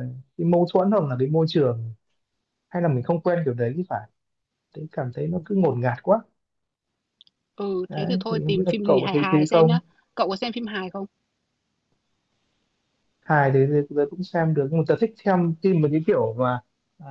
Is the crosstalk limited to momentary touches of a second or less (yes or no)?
no